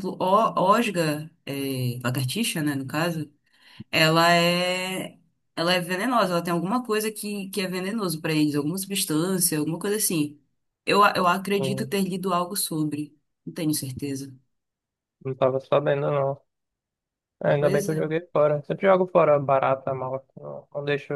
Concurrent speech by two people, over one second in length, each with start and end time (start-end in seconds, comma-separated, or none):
none